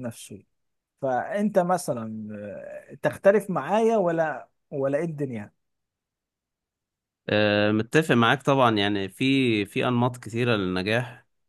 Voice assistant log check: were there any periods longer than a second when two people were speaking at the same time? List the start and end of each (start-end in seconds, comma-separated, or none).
none